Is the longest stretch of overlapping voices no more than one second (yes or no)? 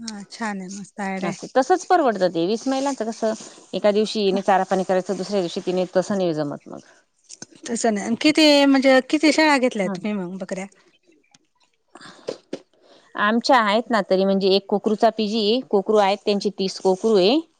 yes